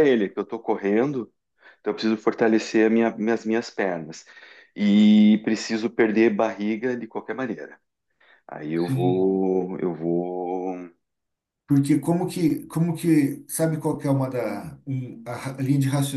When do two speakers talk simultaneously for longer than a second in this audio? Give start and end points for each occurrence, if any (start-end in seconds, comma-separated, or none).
none